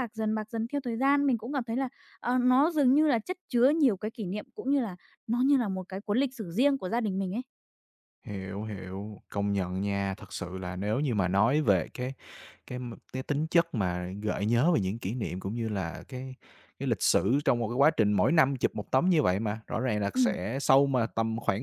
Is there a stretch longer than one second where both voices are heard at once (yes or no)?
no